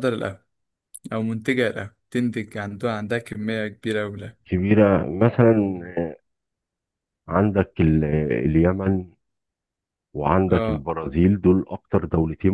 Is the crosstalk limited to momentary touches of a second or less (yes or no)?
yes